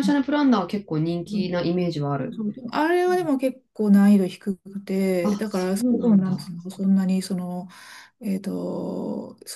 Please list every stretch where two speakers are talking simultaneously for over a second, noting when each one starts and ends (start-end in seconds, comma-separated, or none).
5.2-6.5